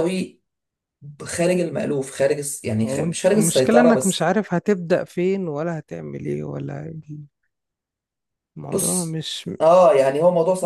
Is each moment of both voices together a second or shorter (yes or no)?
no